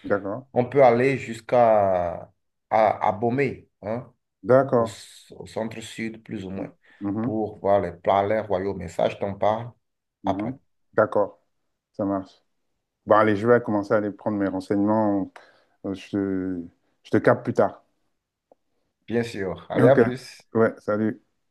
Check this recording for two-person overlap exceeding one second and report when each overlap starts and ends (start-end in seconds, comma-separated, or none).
none